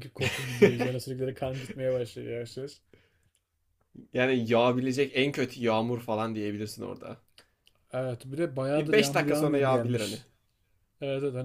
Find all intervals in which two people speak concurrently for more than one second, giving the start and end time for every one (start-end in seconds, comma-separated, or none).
8.8-10.2